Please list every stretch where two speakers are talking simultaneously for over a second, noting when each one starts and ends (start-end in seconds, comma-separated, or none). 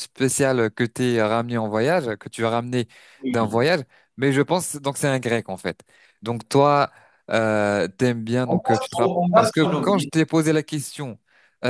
8.5-10.1